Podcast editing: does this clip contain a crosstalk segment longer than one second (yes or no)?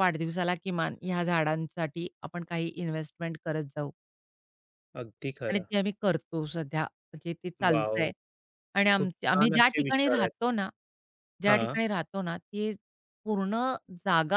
yes